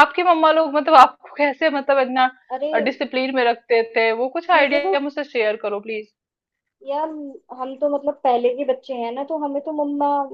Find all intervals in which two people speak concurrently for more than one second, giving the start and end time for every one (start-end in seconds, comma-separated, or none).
none